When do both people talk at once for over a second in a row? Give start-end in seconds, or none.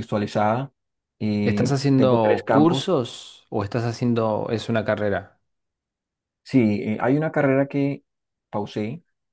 1.4-2.9